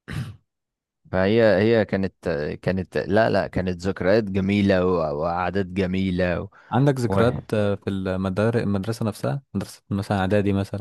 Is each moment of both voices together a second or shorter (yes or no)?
yes